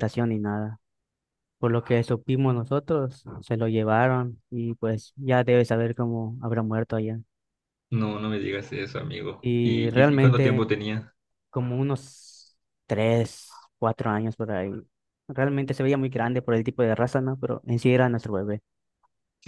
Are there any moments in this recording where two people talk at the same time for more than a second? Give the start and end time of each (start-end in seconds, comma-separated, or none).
9.4-10.7